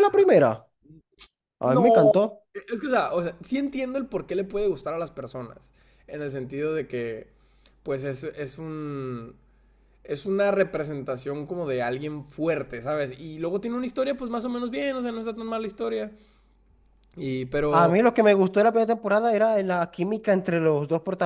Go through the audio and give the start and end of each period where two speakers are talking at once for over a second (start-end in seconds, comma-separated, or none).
none